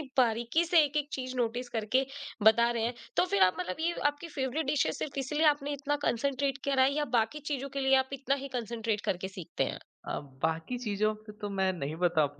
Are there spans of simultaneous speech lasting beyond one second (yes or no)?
no